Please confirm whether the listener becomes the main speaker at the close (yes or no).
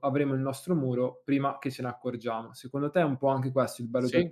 yes